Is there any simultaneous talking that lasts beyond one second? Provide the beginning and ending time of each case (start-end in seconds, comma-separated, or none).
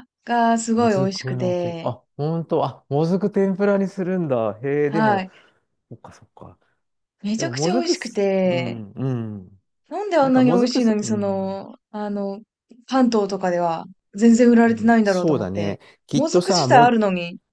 0.8-1.9, 7.3-8.8, 10.2-11.6, 14.7-17.0